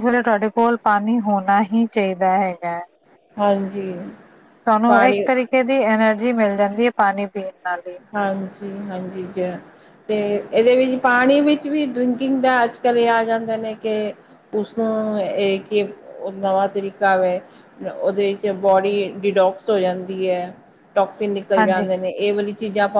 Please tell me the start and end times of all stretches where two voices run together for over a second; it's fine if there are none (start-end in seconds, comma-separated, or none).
none